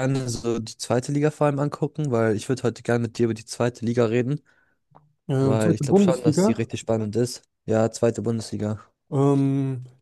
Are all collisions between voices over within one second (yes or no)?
no